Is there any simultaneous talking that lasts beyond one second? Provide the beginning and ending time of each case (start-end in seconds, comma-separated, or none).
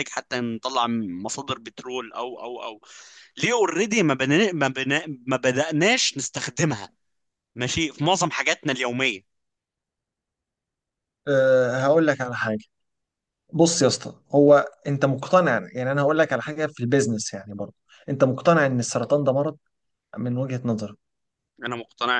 none